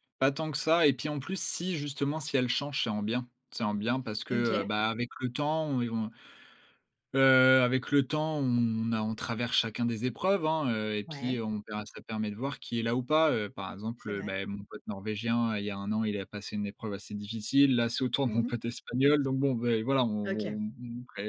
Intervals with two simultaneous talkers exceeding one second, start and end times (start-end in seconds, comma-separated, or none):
none